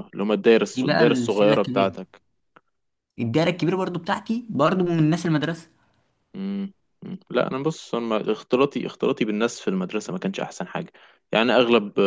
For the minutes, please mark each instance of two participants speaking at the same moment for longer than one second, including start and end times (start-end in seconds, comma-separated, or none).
0.6-1.9